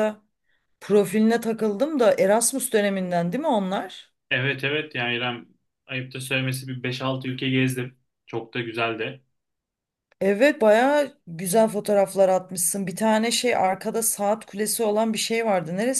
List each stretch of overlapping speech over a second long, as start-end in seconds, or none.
none